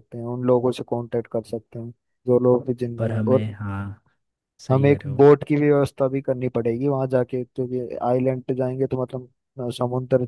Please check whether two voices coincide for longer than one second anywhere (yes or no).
no